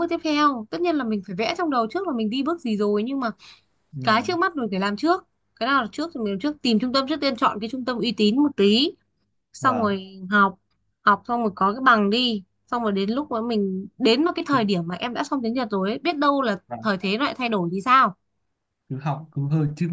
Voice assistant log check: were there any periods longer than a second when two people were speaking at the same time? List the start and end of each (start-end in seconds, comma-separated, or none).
none